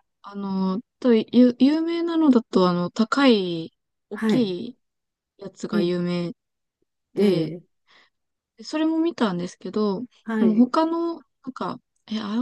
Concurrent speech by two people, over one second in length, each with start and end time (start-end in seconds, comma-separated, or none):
none